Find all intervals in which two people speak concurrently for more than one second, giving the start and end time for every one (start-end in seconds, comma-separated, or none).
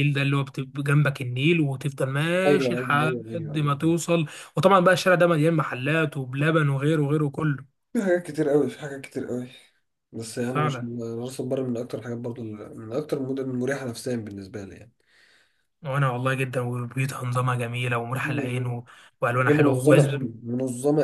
2.5-3.8